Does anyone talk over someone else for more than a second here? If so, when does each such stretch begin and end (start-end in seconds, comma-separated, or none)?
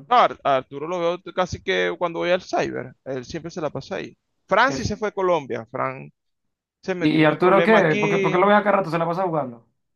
7.0-8.5